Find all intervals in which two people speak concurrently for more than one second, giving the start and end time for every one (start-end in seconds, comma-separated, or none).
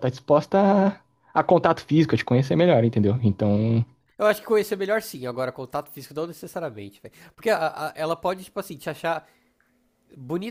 none